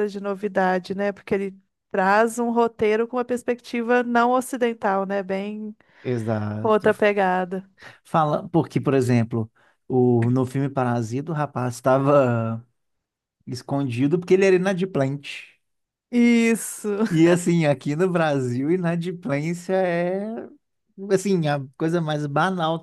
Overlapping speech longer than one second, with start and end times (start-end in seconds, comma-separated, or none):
none